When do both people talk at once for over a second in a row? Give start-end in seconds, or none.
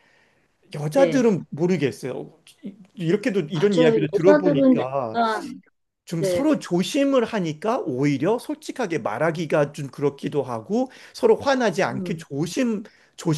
3.5-5.2